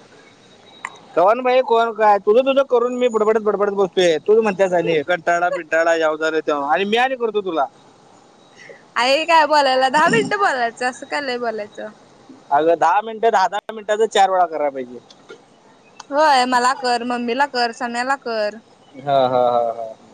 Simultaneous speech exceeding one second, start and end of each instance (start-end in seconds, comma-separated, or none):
none